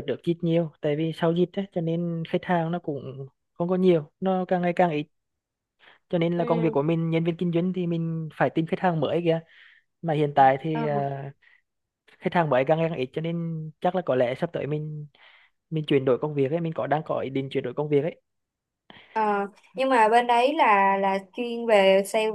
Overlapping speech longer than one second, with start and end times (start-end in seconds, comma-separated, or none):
none